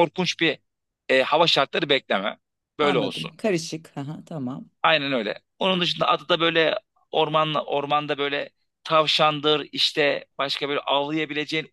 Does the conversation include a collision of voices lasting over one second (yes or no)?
no